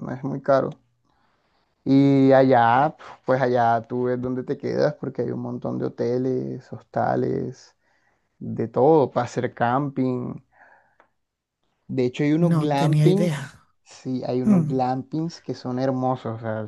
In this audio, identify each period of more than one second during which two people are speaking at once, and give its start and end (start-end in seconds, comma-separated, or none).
12.4-13.7